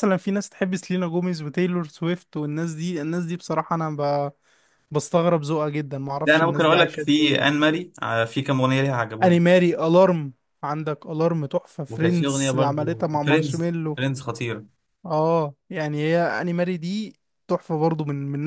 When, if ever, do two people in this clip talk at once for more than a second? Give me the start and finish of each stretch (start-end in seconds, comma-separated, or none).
6.2-7.5, 11.9-14.0